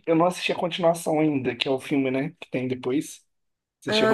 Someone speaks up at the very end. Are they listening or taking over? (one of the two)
taking over